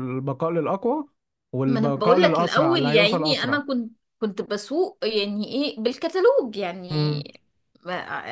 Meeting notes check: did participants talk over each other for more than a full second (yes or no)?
yes